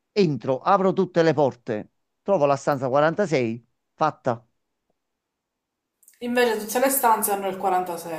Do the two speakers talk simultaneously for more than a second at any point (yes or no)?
no